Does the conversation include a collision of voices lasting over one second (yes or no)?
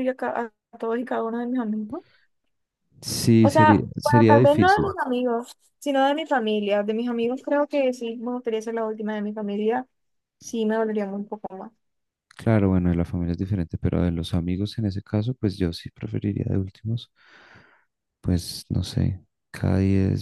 yes